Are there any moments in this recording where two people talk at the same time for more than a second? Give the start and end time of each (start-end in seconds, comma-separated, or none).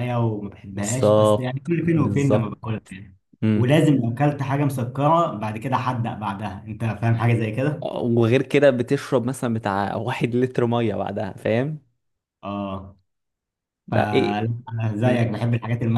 0.7-2.5